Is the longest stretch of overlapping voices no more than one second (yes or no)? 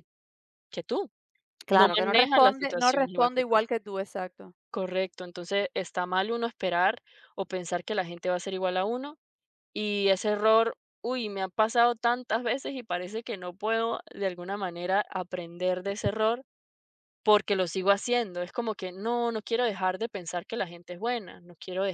no